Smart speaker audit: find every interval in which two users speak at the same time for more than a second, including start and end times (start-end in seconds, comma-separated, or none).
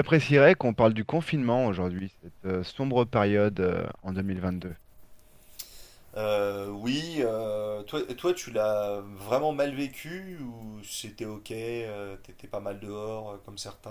none